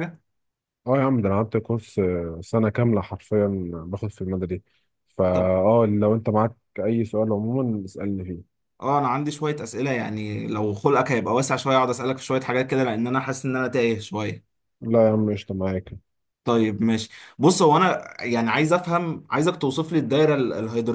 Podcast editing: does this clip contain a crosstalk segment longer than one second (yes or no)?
no